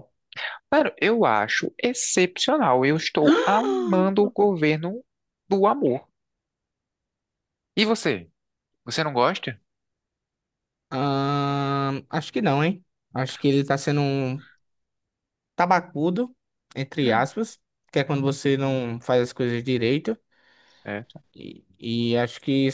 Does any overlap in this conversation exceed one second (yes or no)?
no